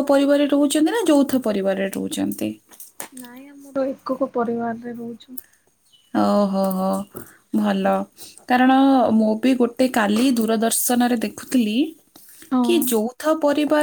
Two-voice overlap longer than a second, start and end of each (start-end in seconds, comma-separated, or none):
none